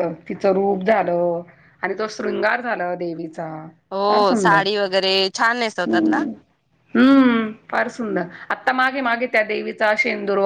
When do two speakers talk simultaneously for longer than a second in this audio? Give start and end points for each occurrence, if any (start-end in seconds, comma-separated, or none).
none